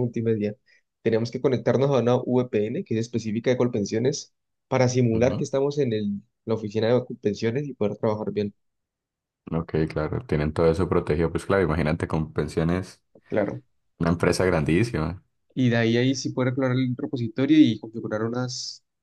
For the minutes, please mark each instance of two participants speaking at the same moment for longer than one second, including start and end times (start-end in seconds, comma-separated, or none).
none